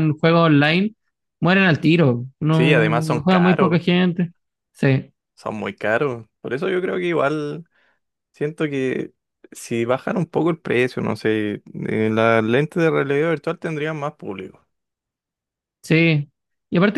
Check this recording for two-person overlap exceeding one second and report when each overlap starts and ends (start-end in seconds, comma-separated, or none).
2.5-3.8